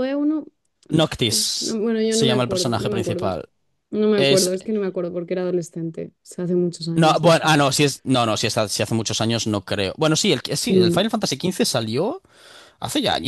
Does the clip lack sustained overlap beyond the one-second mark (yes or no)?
no